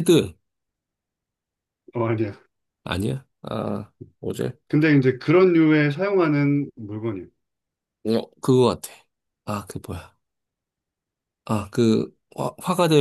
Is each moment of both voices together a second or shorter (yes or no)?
yes